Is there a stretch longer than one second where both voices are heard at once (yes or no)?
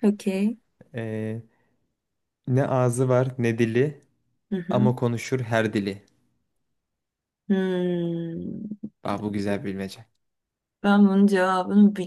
no